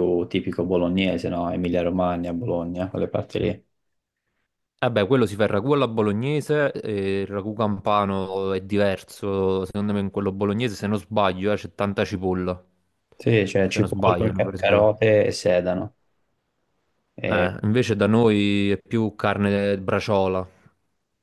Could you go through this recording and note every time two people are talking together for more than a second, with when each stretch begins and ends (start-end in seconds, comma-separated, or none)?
13.7-15.0